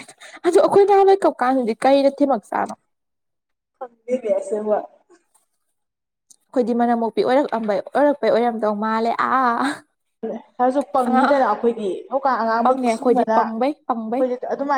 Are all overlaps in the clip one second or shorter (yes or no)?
no